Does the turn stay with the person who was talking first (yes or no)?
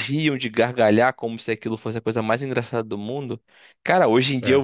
yes